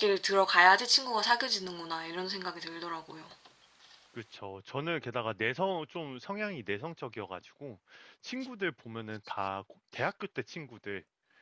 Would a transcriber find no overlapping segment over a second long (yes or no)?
yes